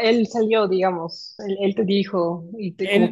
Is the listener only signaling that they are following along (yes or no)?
no